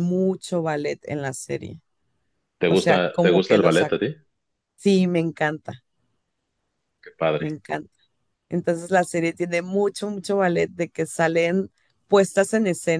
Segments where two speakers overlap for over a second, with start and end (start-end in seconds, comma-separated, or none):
2.7-3.9